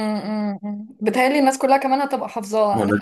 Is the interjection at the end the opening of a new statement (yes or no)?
no